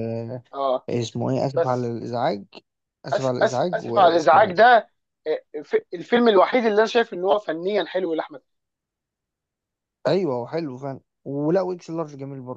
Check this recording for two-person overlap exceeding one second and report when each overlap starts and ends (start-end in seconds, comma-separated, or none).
3.1-4.5